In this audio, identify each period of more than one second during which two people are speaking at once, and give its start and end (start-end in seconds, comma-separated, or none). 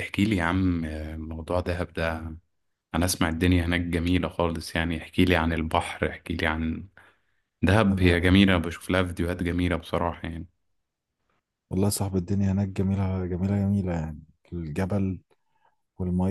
none